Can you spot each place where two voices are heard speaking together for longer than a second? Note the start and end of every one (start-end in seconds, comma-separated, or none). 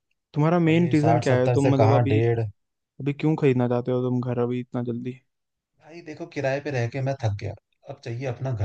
0.7-2.2